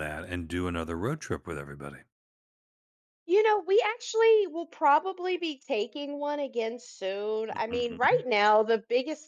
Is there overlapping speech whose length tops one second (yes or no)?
no